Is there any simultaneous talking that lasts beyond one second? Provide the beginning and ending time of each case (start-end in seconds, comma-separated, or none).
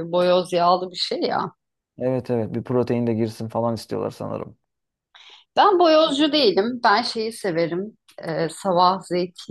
none